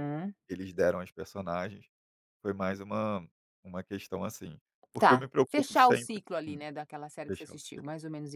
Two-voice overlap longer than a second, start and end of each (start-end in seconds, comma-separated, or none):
5.0-6.6